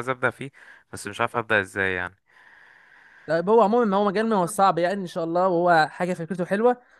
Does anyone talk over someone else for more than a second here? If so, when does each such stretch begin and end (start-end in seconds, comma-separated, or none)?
none